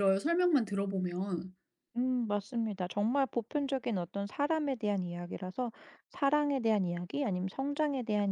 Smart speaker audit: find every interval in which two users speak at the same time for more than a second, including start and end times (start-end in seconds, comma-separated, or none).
none